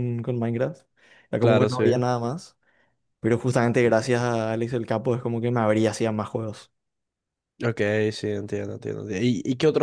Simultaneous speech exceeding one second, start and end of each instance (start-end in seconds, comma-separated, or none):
none